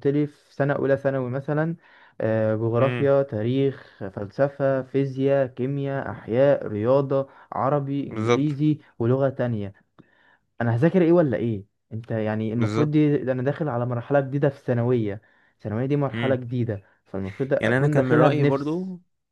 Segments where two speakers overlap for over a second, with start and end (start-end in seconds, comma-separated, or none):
17.6-18.8